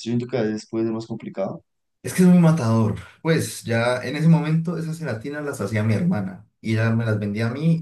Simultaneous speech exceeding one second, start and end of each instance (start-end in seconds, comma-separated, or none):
none